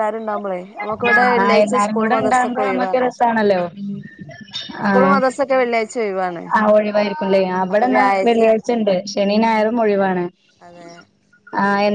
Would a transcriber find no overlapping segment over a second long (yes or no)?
no